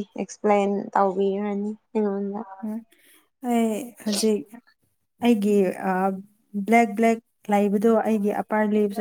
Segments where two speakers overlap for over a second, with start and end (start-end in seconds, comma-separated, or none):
none